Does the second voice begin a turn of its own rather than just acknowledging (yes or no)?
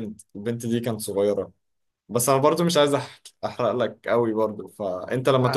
no